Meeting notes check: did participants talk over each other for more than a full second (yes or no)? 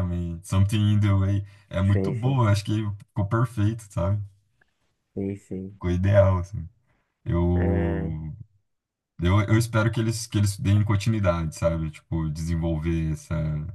no